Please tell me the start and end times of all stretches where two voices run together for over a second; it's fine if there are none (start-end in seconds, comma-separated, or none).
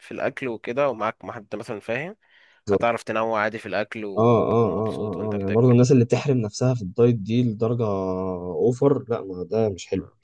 4.2-5.7